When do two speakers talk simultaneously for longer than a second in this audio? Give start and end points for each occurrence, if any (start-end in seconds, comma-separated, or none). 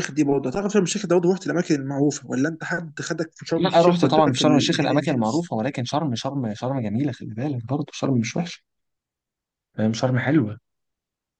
3.5-5.5